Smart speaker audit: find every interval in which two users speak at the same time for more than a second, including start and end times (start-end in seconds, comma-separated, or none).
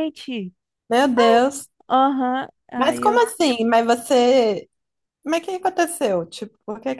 none